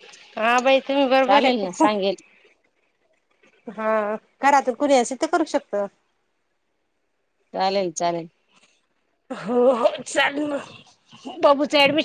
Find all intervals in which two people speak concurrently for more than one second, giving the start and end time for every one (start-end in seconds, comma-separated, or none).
none